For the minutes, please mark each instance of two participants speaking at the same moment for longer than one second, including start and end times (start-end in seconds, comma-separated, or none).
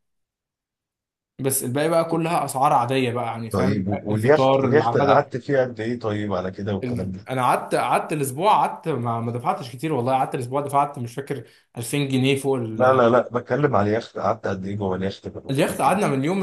3.5-5.3